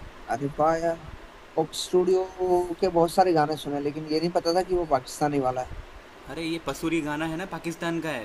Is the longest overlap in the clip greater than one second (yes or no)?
no